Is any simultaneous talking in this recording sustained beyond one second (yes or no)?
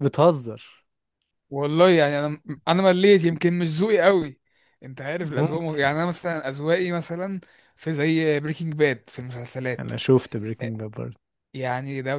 no